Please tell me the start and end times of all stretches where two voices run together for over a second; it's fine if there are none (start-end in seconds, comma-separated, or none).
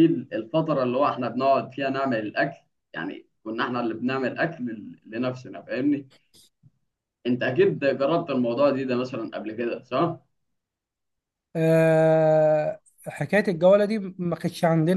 none